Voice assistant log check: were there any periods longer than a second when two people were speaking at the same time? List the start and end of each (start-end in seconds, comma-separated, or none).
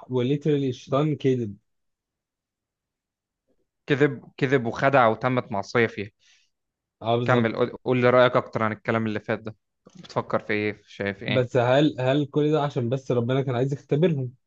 none